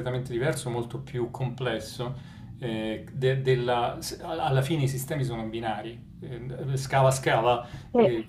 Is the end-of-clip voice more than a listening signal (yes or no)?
no